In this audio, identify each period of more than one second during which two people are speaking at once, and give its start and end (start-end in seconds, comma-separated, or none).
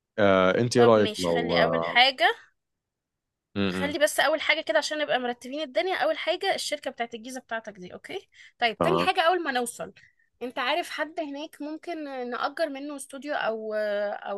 0.8-2.0